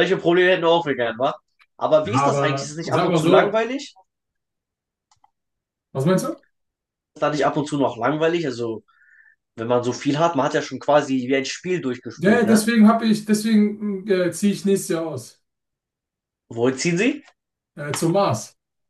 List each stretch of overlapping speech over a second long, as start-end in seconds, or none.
2.0-3.6